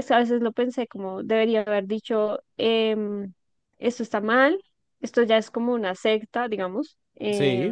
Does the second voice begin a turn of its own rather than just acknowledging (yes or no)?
no